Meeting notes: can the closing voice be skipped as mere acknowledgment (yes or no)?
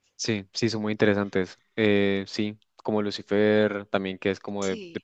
yes